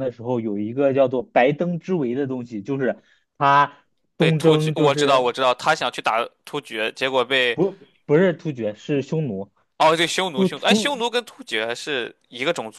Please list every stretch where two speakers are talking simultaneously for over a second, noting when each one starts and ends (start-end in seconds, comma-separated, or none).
4.2-5.4